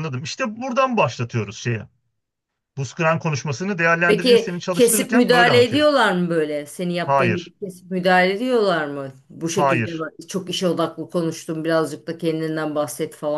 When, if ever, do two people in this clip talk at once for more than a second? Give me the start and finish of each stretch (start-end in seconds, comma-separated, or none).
4.0-5.8